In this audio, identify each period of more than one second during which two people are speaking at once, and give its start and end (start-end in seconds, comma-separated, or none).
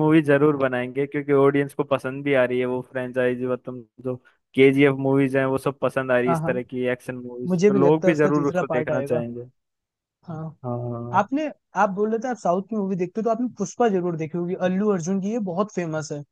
7.5-9.2